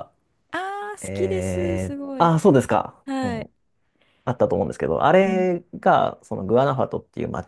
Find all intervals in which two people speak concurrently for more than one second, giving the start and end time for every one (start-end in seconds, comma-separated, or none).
1.0-2.4